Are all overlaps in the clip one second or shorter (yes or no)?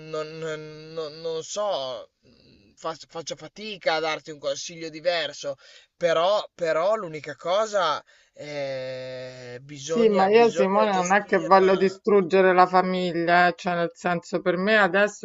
no